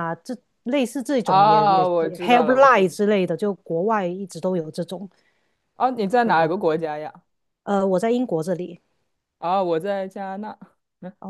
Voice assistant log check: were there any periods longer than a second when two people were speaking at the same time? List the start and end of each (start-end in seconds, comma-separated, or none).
1.2-2.9